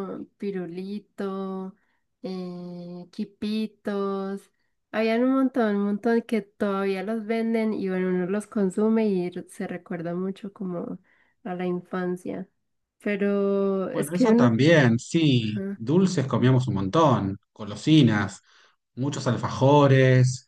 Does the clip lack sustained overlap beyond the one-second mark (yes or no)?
yes